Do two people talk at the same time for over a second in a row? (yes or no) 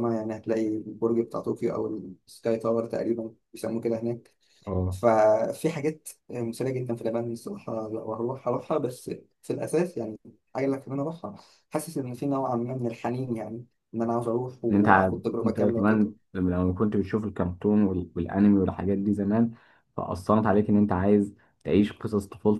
yes